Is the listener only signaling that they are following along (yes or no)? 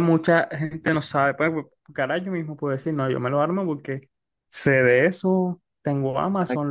yes